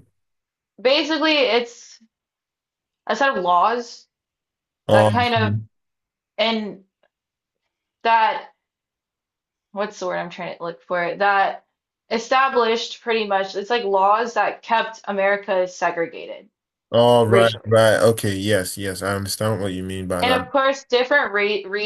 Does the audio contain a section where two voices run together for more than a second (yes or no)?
no